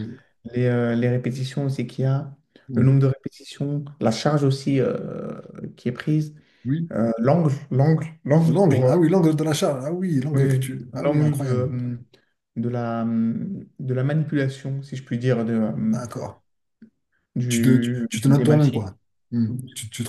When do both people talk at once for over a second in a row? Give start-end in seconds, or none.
10.3-11.7, 17.5-18.9